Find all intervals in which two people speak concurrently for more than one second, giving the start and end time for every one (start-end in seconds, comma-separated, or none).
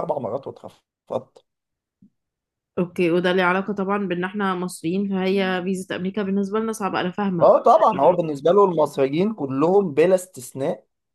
none